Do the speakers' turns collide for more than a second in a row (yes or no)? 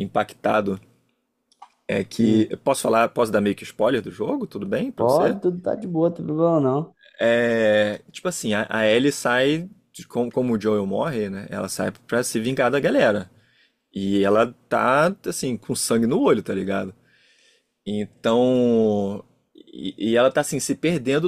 no